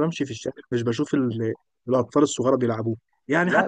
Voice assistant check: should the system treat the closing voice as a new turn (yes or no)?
no